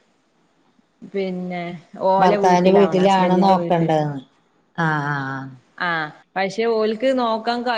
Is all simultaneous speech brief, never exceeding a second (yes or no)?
no